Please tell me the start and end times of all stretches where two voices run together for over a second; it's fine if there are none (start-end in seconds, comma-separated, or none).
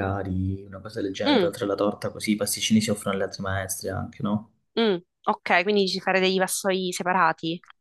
none